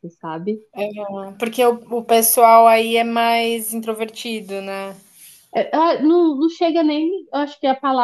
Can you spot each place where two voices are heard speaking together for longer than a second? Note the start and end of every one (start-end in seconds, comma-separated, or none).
none